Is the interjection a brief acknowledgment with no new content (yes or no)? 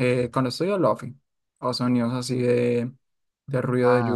yes